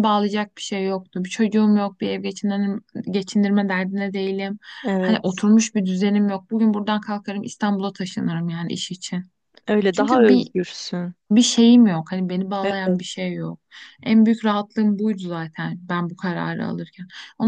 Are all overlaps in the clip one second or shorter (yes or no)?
yes